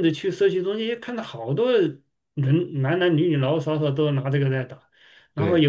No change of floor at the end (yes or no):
yes